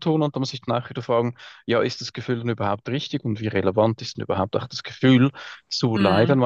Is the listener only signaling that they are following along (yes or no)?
yes